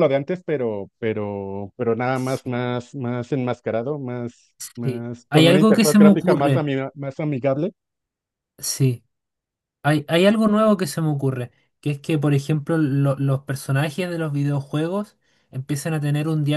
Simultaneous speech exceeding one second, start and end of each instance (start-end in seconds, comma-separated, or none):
4.8-6.6